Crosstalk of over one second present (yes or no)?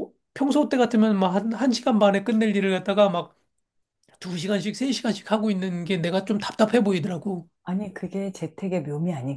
no